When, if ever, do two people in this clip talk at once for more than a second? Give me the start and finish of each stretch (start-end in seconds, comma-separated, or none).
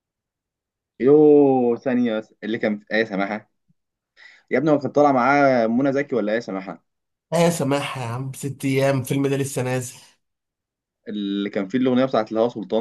none